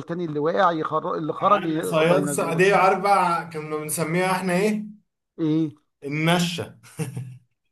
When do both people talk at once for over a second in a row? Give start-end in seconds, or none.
1.4-2.6